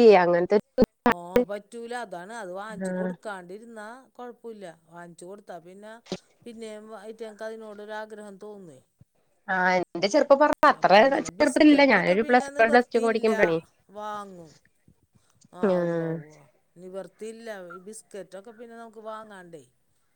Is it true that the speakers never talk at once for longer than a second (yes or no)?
no